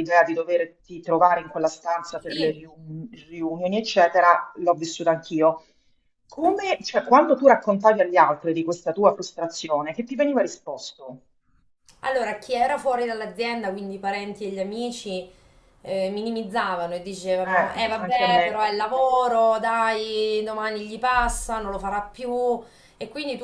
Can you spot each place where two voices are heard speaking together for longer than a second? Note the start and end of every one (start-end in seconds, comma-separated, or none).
17.4-18.7